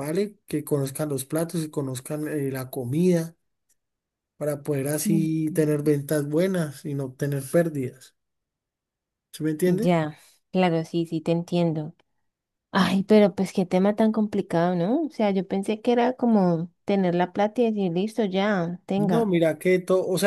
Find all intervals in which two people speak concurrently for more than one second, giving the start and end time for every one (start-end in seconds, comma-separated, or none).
none